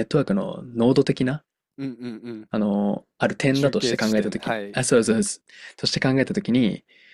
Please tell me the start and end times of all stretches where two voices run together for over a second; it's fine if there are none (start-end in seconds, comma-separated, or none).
3.5-4.8